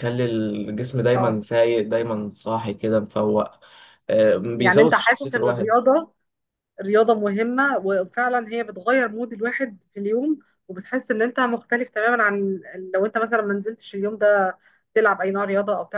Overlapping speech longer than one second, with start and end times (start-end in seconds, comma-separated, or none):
4.5-5.7